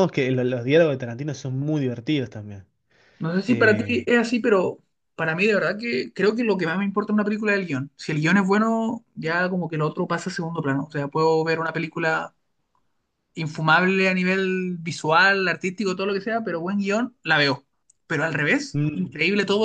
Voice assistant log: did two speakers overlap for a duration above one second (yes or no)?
no